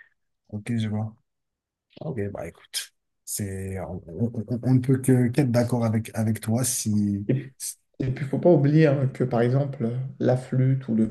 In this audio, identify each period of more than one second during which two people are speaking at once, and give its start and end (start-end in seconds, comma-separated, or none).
none